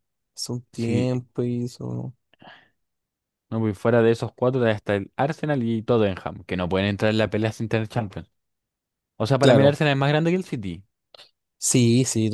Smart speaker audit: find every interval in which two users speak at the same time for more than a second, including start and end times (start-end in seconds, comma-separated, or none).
none